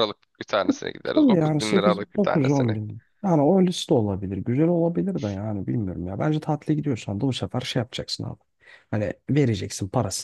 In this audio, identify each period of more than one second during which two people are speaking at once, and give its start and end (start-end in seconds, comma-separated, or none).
1.1-2.8